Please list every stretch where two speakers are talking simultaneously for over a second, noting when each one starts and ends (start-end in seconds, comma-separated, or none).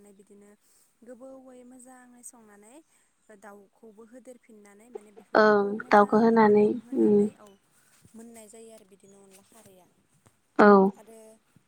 none